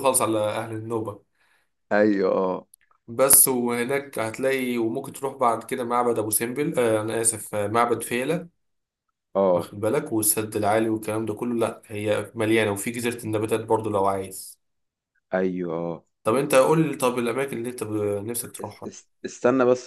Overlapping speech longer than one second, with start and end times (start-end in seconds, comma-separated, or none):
none